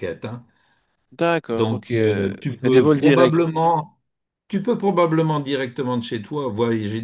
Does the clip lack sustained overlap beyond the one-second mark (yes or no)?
no